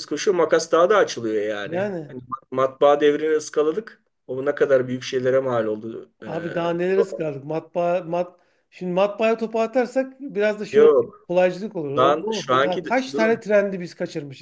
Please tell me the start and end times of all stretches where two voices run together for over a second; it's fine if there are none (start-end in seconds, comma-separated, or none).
12.0-13.4